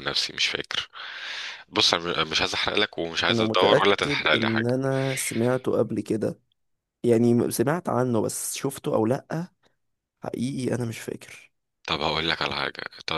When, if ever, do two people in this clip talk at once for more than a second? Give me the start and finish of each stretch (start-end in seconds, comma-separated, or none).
3.3-4.7